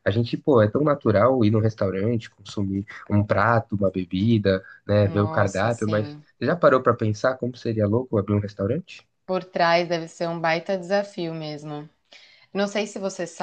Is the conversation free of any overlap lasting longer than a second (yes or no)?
no